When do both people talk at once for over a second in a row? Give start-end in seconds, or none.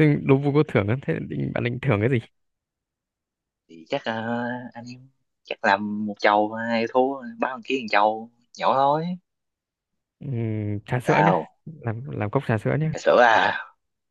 none